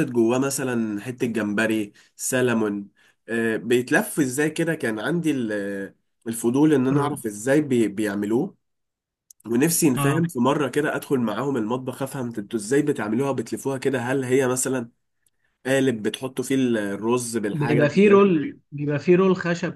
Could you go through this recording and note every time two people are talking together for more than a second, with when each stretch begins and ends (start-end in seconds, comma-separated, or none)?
none